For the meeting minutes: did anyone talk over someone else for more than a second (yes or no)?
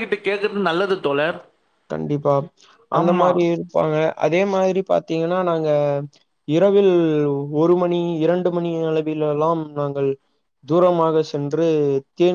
no